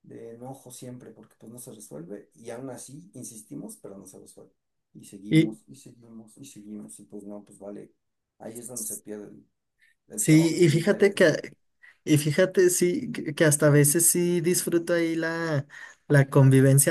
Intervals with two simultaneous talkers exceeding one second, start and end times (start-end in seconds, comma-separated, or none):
10.1-11.4